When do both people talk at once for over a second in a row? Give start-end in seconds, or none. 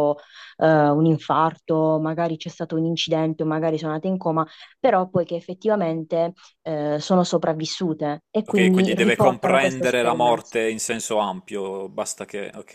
8.5-10.5